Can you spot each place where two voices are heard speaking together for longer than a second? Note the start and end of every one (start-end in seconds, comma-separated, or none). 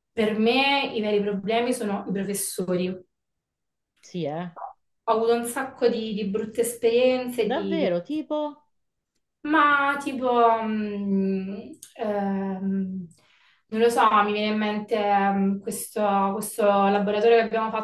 none